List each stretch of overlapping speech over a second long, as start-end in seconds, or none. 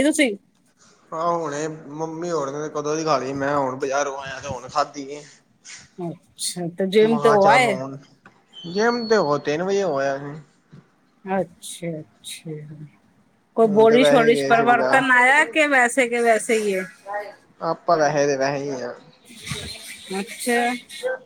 13.7-15.5